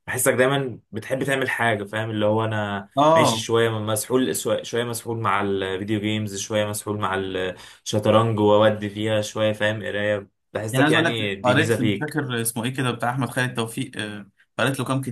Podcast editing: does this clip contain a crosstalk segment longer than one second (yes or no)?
yes